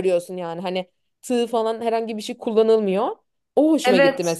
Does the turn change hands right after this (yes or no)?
yes